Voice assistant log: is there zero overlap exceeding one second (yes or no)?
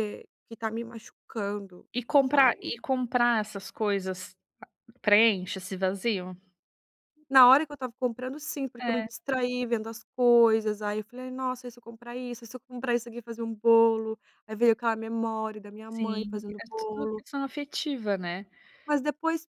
no